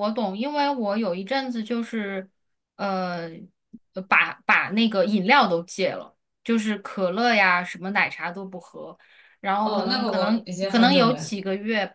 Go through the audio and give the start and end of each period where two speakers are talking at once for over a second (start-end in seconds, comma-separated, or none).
9.6-11.3